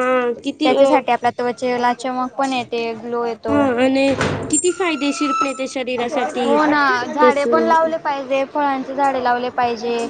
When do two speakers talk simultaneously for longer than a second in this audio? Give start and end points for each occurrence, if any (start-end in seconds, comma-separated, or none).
none